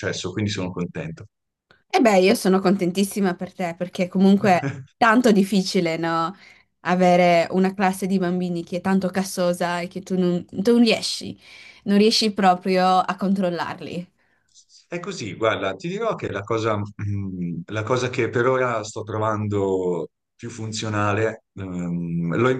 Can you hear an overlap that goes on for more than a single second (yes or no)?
no